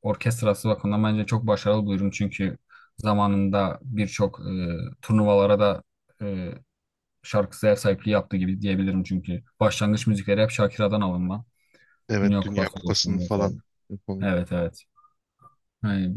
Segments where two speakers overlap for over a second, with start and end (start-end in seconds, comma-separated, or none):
12.2-13.5